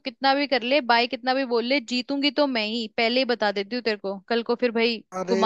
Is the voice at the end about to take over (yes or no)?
yes